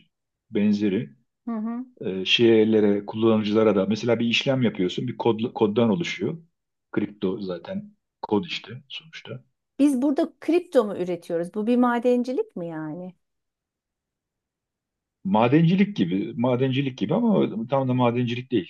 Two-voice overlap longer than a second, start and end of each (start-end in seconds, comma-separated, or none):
none